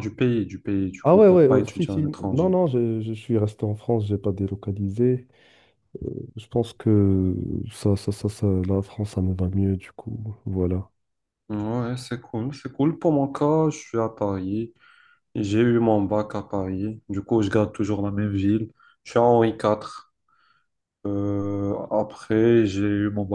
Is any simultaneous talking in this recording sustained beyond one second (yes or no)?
yes